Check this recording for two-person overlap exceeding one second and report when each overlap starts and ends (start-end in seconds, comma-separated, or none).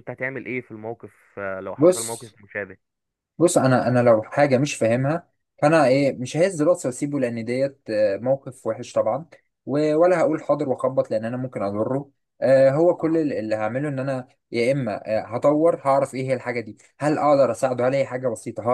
none